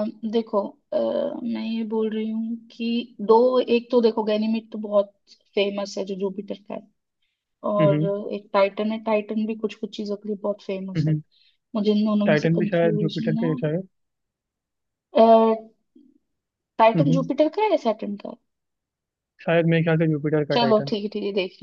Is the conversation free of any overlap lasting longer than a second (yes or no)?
no